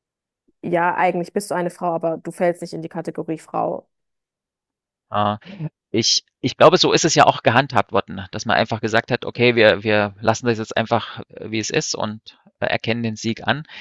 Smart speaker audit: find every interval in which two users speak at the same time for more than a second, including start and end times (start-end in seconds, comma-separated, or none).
none